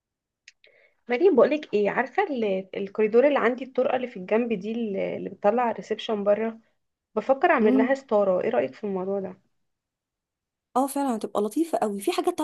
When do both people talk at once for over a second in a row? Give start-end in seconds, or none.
none